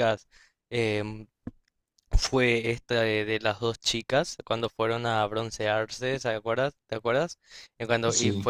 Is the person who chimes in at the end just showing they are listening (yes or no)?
yes